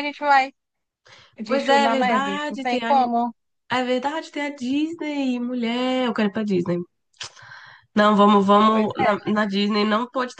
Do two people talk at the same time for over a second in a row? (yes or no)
yes